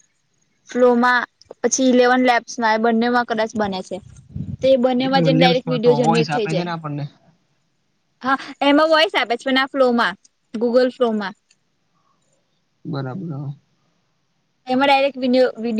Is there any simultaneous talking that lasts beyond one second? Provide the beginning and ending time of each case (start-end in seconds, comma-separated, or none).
5.0-6.7